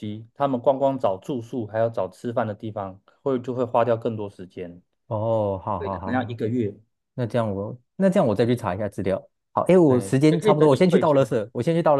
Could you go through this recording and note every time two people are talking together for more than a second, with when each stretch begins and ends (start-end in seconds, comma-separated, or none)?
9.8-11.4